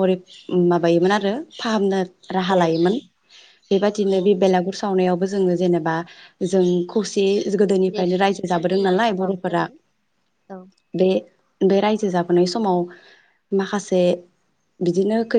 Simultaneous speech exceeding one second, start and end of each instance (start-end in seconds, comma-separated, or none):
7.9-9.6